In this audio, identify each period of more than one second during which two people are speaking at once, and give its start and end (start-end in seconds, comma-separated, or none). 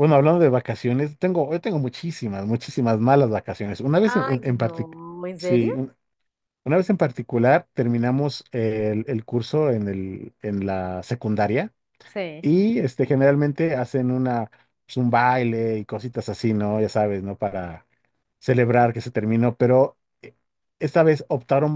4.1-5.8